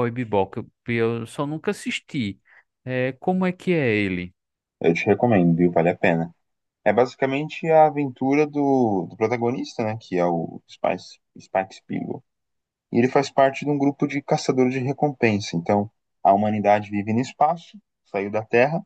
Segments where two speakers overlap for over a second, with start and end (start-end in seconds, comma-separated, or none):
none